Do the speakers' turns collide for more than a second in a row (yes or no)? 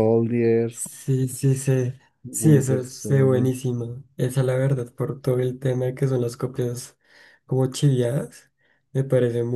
yes